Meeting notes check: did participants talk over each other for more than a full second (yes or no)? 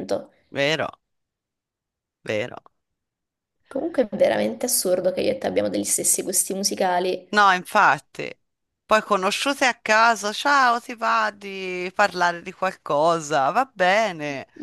no